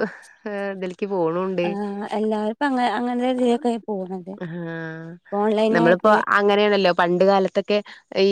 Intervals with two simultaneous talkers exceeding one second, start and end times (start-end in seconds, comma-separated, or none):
none